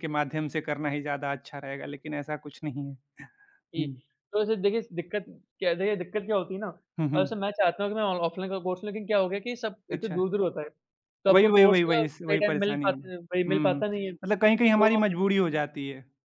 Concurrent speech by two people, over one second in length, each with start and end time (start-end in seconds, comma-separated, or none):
11.3-13.8